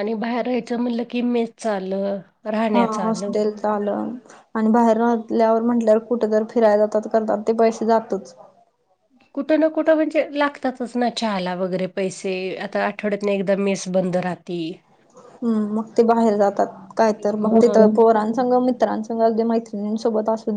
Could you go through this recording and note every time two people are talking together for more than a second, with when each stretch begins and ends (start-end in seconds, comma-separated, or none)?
none